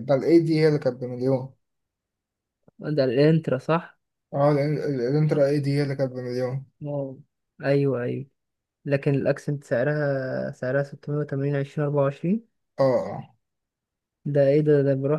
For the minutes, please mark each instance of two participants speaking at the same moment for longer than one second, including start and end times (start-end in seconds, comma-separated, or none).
none